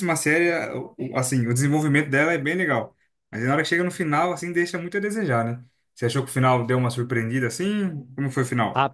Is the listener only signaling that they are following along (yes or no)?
no